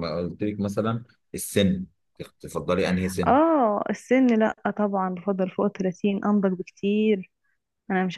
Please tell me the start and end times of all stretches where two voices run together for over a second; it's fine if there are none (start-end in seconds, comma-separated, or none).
none